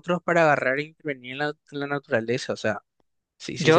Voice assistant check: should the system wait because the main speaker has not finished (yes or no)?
no